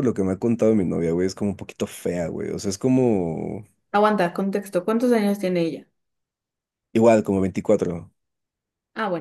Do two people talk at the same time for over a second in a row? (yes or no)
no